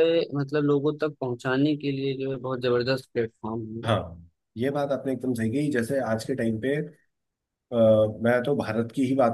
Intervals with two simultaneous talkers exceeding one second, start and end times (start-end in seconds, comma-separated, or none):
none